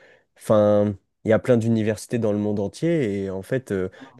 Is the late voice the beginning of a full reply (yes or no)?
no